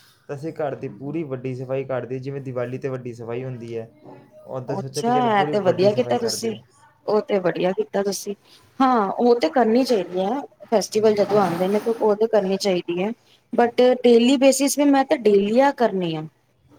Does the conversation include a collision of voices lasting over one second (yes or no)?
yes